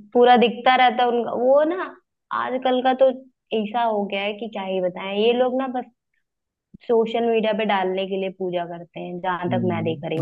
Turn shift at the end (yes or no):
yes